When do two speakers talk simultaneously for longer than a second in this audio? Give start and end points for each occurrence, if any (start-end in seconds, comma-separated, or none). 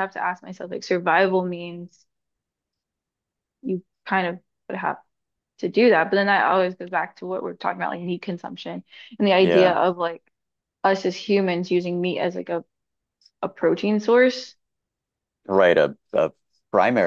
none